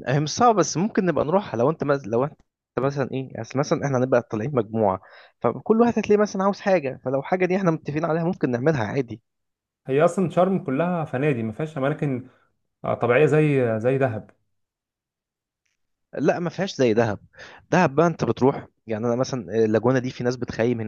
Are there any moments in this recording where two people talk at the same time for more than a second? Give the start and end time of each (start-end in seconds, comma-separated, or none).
none